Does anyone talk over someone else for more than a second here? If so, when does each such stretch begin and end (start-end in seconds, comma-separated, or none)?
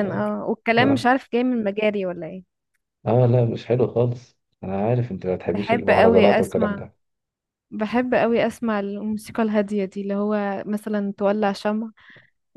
5.4-6.8